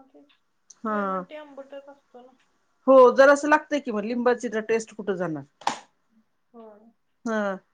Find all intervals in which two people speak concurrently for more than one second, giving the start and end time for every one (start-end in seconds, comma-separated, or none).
none